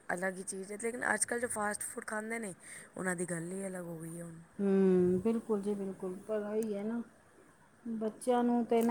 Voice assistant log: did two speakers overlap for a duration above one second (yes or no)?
no